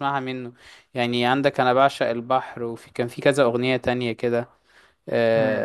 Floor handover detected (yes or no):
no